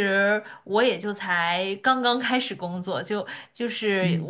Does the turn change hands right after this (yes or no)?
no